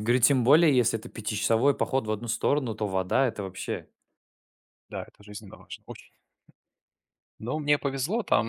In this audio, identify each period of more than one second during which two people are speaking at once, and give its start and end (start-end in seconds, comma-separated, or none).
none